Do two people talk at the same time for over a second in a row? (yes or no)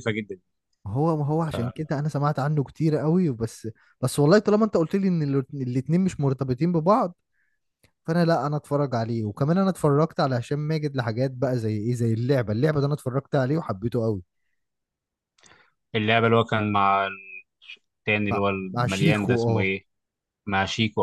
yes